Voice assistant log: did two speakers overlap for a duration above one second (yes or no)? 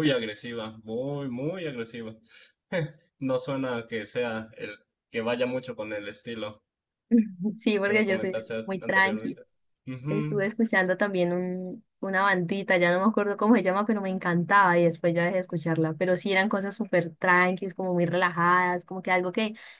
yes